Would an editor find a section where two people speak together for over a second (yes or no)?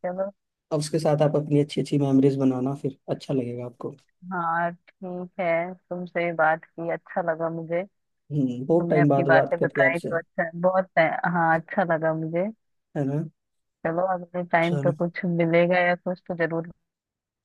yes